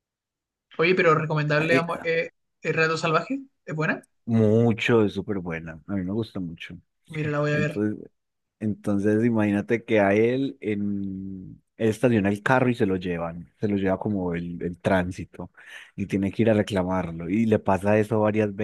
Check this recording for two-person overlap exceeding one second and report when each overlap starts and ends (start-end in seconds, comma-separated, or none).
none